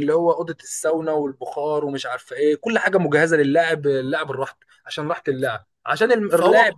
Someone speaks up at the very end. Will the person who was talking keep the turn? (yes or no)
yes